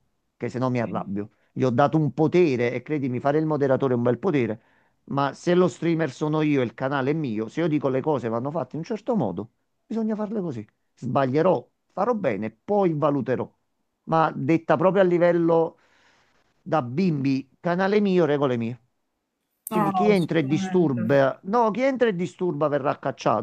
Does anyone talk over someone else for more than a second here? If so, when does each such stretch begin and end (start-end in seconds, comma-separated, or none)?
19.7-21.0